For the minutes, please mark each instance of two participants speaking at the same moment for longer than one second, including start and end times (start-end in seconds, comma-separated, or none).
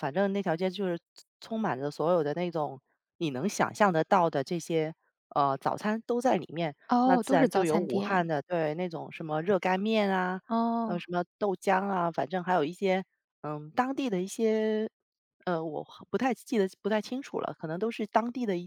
6.9-8.3